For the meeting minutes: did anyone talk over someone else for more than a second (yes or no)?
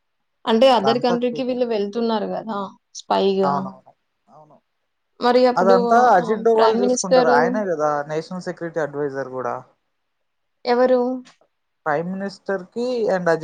no